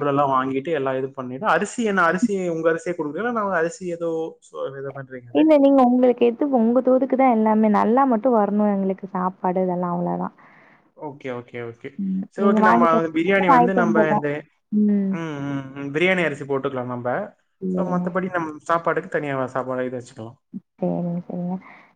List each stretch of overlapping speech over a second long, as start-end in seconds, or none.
12.4-14.3